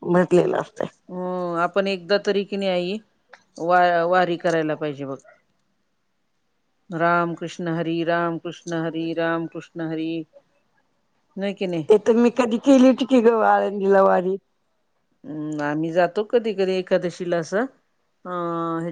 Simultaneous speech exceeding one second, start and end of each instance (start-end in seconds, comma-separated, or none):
none